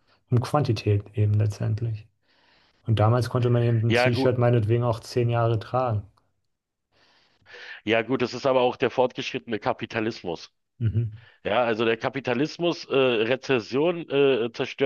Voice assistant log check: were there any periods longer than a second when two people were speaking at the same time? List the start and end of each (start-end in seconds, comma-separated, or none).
none